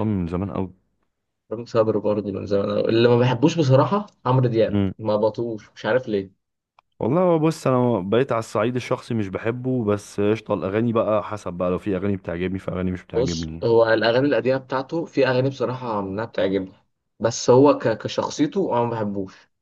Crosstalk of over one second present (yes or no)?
no